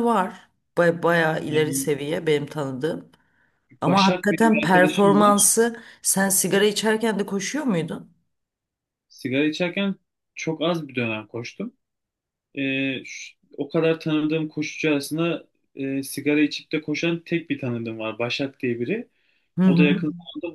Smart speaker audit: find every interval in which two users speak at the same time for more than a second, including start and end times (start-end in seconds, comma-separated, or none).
3.8-5.5